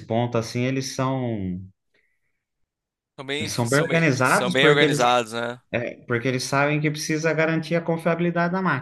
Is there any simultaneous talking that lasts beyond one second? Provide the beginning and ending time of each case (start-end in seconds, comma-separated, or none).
3.4-5.0